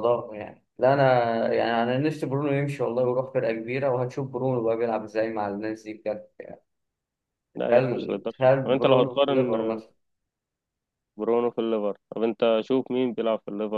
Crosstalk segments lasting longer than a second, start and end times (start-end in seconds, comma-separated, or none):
7.7-9.6